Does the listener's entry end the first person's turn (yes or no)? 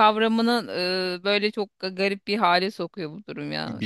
yes